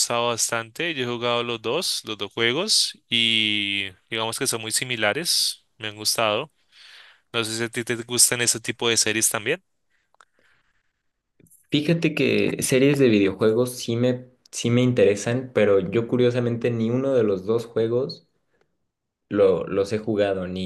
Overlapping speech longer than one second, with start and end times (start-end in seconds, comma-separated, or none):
none